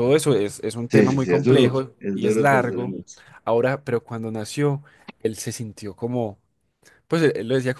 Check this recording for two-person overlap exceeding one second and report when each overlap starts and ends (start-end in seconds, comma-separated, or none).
0.9-2.9